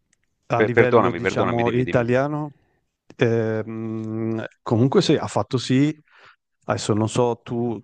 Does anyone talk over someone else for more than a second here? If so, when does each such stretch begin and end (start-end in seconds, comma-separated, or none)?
0.6-2.1